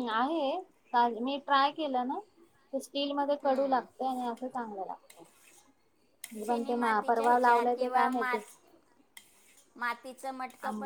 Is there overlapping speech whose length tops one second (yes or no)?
yes